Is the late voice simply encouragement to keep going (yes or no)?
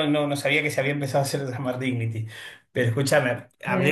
no